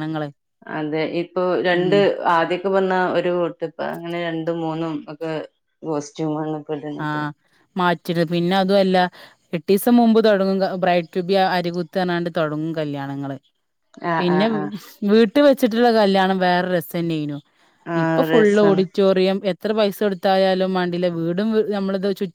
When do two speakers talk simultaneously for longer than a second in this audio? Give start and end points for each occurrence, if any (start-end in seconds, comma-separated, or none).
none